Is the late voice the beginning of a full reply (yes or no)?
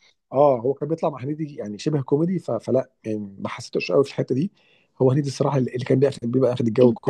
yes